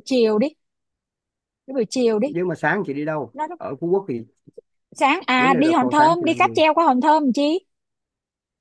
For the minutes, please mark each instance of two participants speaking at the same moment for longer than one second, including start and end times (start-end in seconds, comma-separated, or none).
5.4-6.6